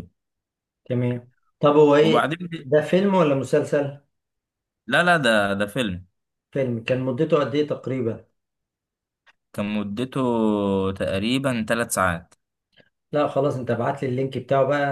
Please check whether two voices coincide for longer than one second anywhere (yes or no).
no